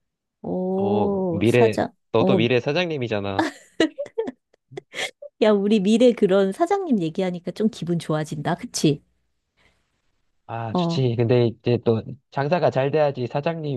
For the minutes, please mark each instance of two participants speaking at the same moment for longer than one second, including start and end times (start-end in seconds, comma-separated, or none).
0.8-2.4